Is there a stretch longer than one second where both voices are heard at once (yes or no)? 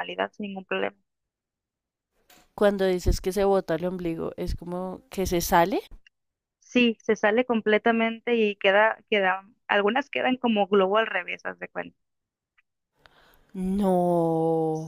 no